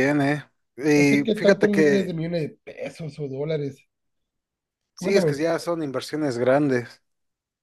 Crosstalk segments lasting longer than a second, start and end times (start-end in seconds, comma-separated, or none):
0.9-2.2